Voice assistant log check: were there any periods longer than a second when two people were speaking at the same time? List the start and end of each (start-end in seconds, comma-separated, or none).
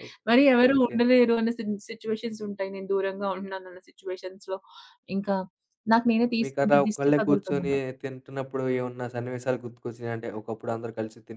6.4-7.7